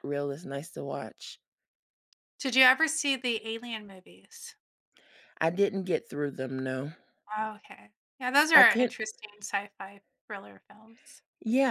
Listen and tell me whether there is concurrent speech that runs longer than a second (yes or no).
no